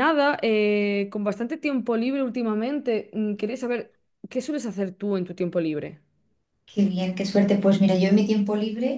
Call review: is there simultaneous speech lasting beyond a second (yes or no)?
no